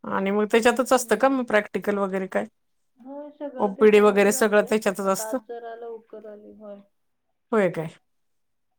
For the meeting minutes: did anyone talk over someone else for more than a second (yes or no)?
yes